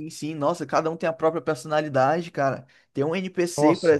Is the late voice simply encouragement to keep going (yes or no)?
yes